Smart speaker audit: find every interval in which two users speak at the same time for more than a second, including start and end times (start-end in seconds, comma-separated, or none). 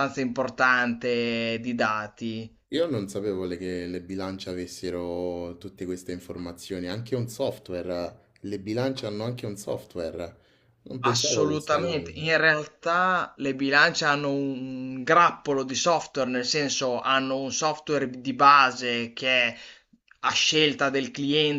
11.0-12.2